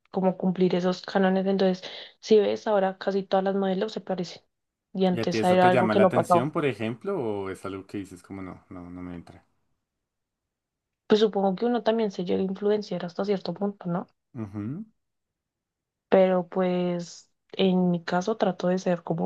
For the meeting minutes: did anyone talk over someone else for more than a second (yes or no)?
yes